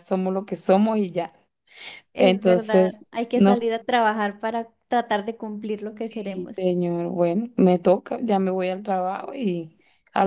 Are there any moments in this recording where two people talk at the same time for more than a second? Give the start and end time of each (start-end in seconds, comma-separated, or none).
2.2-3.6